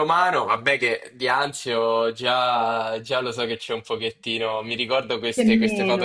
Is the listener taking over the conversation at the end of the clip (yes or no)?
no